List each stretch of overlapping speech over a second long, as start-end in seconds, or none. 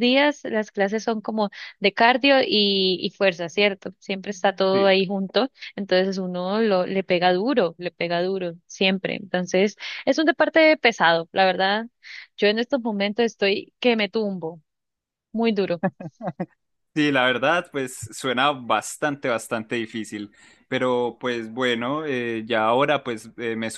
none